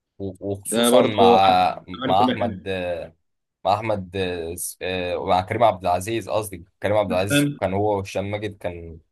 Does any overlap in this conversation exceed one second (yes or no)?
yes